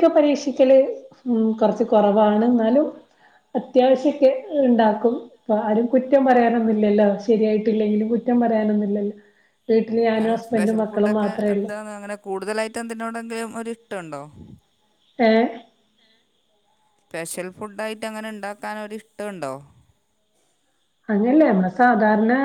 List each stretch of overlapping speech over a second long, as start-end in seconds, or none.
10.1-11.7